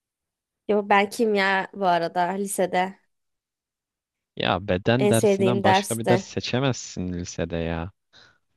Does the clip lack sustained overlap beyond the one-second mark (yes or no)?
no